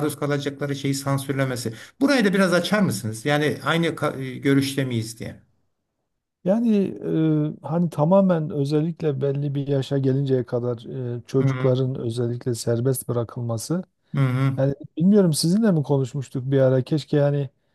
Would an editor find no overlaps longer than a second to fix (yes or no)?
yes